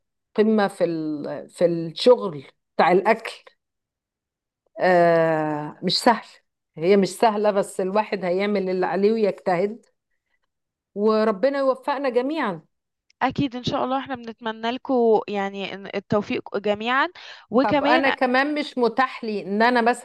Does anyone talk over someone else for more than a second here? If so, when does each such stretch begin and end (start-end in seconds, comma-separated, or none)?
none